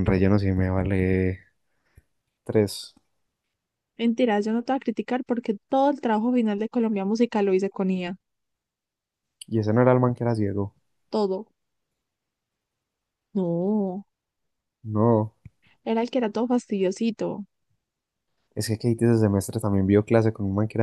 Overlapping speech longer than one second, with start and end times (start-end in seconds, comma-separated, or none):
none